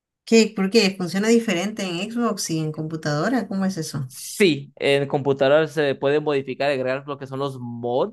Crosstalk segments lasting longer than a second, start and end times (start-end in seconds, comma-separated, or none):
none